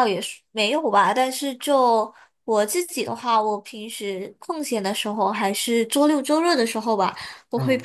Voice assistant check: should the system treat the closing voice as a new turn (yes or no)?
no